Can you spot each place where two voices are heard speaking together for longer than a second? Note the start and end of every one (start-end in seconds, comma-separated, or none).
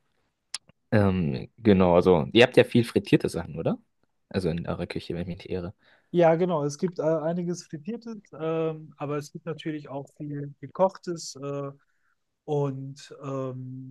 none